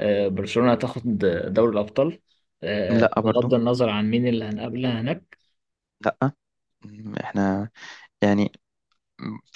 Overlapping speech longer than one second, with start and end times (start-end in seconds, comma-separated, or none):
none